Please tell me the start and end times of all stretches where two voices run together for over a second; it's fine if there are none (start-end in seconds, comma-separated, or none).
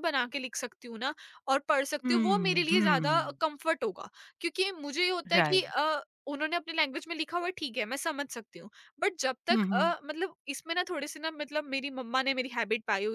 2.0-3.4